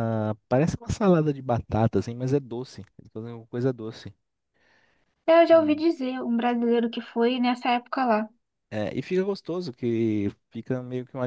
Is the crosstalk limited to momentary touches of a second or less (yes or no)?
yes